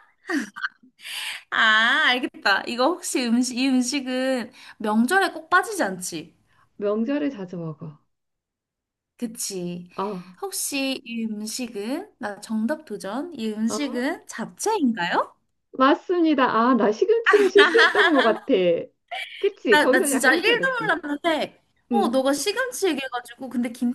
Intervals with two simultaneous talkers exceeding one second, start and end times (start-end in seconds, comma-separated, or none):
19.7-20.9